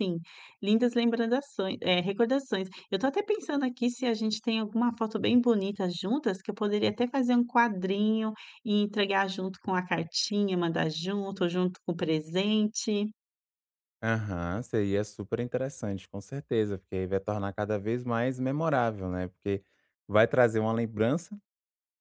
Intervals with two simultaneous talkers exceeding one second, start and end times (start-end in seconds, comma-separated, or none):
none